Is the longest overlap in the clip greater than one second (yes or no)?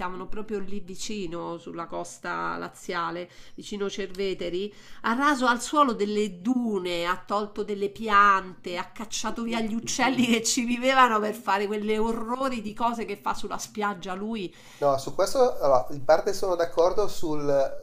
no